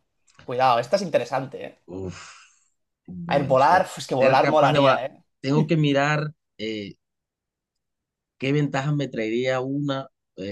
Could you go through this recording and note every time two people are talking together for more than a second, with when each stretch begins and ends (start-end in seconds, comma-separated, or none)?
3.3-5.0